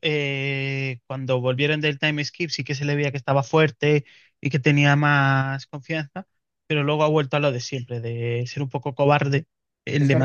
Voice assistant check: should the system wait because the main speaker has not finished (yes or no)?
no